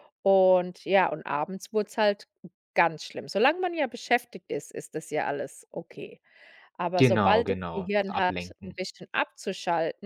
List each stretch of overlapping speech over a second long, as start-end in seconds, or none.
7.0-8.7